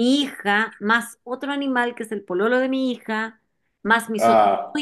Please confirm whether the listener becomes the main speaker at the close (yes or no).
no